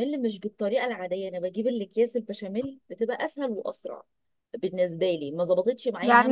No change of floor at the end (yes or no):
no